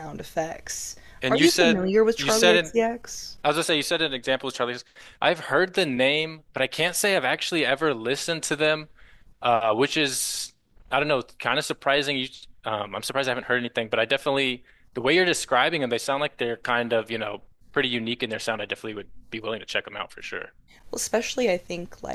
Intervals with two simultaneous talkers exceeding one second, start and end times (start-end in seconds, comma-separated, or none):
1.2-2.7